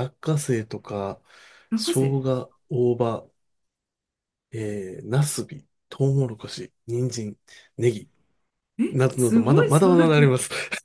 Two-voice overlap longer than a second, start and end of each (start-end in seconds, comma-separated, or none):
8.9-10.2